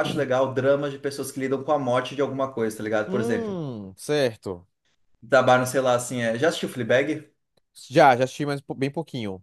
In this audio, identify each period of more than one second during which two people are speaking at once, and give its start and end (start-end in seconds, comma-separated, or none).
none